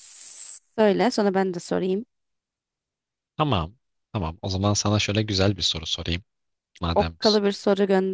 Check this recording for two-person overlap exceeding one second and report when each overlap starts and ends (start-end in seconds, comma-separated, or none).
none